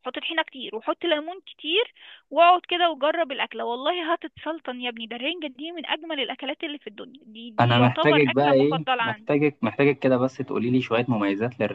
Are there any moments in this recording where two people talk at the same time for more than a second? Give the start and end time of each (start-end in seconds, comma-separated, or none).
7.6-9.3